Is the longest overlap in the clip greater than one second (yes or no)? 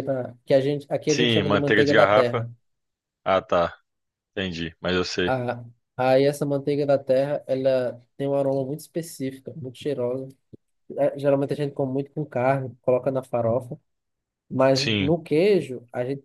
yes